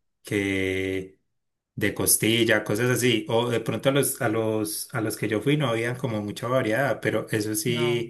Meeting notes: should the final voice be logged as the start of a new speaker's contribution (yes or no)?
no